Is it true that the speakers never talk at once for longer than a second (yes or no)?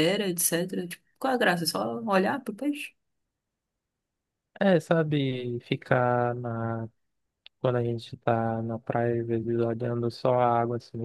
yes